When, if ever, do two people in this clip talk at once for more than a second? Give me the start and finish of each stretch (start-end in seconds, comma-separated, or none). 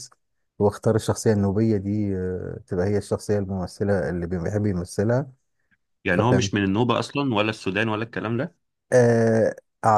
none